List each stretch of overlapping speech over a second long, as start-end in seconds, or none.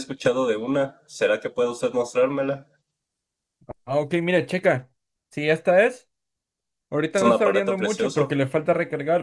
7.1-8.4